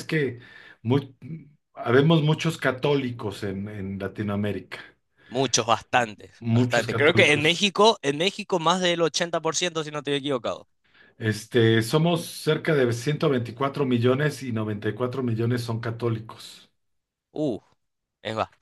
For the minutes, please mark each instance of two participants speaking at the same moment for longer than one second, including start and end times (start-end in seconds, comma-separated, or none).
6.4-7.7